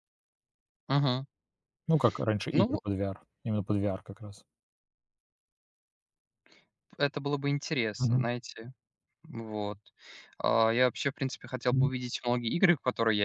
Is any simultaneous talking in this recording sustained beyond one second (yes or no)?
no